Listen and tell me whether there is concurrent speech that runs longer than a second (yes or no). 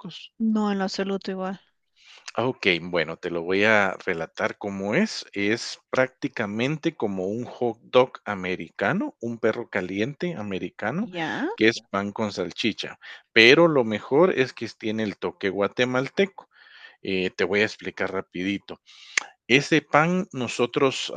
no